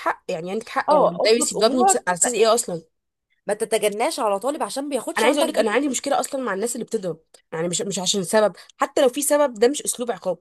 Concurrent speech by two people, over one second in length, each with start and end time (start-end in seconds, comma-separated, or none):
0.9-2.3